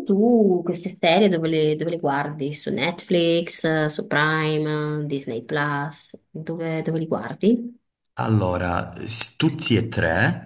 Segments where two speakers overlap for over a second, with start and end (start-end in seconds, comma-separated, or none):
none